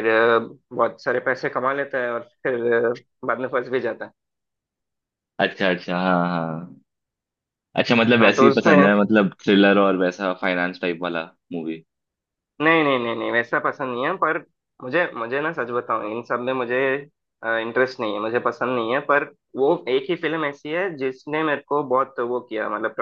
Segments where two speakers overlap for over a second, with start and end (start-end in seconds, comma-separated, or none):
none